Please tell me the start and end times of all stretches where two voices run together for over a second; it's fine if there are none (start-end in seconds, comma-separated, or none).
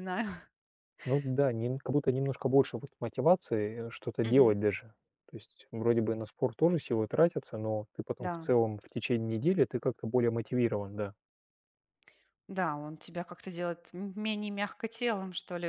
none